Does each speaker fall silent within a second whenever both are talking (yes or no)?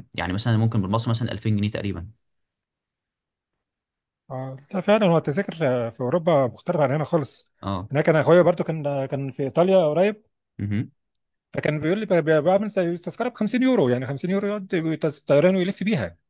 yes